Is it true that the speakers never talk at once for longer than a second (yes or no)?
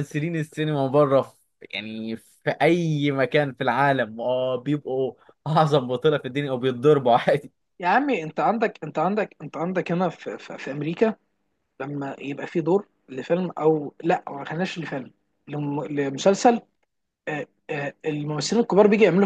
yes